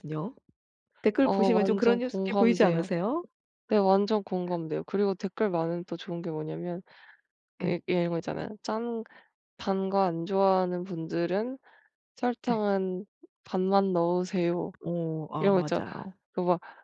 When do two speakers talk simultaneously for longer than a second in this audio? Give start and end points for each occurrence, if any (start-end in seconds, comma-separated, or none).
1.2-2.9